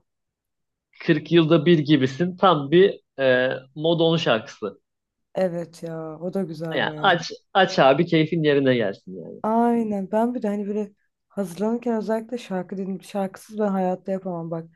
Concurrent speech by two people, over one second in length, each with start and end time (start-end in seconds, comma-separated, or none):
none